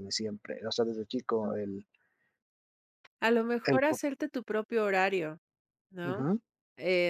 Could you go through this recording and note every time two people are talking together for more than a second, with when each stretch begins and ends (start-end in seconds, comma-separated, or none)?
none